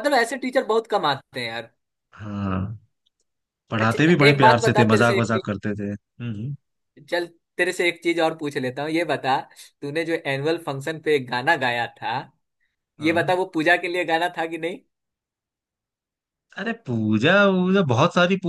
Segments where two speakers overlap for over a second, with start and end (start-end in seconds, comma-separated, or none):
3.8-5.5